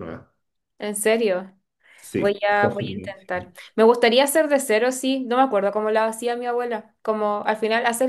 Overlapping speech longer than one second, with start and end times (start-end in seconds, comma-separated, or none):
2.1-3.5